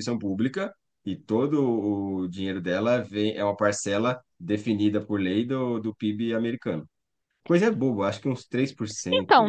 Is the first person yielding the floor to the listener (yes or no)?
yes